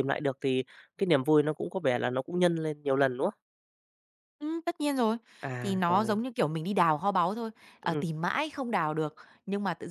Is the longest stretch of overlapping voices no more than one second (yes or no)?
yes